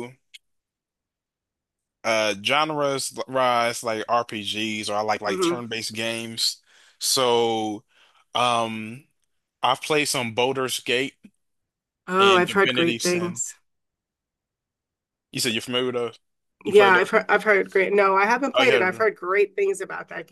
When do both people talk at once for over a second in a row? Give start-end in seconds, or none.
12.2-13.4